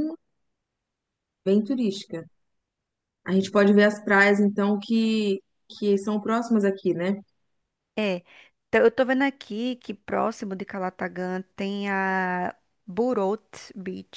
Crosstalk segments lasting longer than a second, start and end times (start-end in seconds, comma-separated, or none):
none